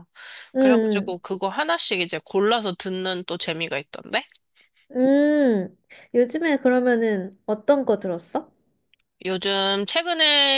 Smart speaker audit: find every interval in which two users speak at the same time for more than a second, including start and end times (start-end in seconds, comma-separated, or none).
none